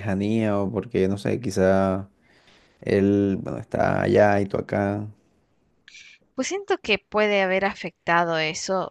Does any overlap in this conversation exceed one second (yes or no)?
no